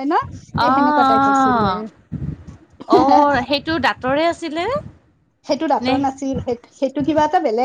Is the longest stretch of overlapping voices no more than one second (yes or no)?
no